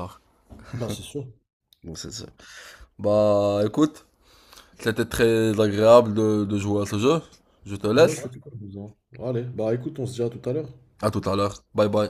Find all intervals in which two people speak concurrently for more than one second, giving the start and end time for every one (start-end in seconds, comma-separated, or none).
none